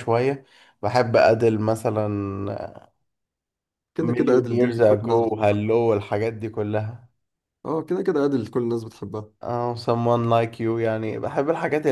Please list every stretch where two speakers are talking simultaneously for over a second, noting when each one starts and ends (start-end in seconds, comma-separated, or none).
4.0-5.6